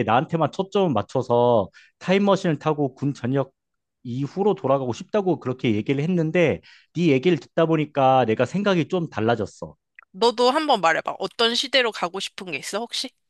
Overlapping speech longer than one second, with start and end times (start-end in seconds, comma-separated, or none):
none